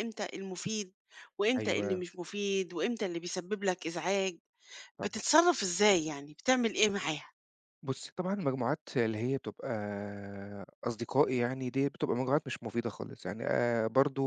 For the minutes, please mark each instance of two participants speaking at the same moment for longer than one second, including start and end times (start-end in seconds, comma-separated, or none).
none